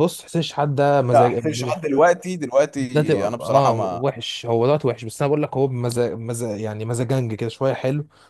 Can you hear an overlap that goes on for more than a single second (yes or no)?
yes